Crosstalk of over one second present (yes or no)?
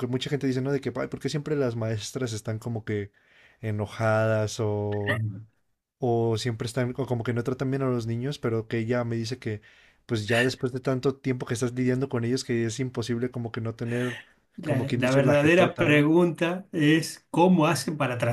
yes